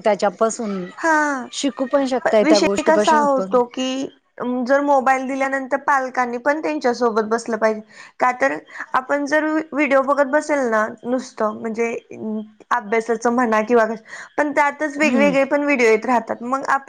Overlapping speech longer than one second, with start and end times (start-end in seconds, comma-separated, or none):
2.2-3.6